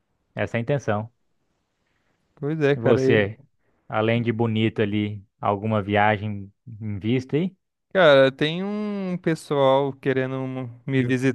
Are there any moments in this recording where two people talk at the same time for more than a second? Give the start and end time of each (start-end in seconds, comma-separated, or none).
none